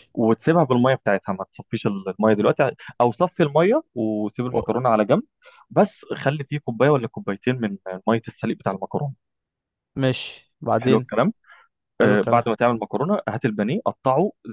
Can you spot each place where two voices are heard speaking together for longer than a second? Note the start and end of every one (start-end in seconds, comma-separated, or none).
none